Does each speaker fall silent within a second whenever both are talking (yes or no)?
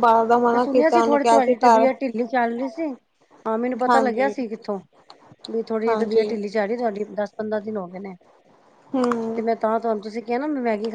no